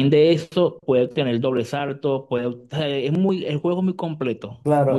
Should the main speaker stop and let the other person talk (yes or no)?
yes